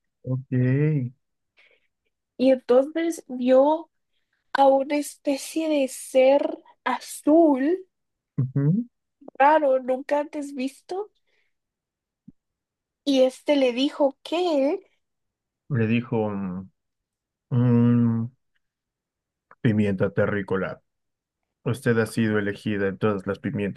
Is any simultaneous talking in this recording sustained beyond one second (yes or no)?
no